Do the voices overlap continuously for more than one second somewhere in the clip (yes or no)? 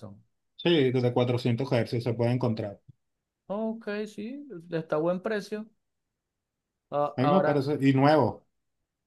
no